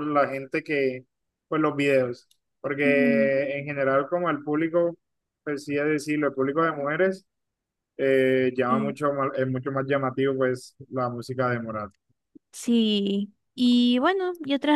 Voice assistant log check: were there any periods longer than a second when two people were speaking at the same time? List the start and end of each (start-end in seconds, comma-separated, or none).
none